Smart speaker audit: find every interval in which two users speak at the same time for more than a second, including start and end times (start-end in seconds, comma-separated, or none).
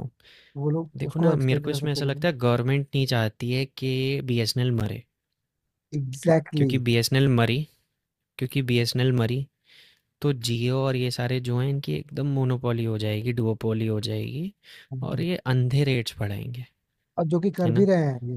1.0-2.3